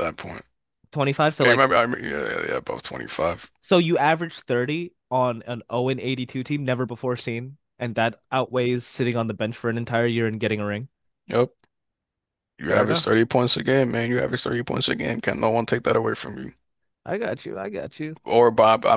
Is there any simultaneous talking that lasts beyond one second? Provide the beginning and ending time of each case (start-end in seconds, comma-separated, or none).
none